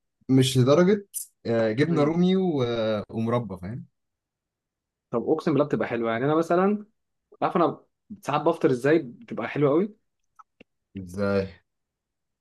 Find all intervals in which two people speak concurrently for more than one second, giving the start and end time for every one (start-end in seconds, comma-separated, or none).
none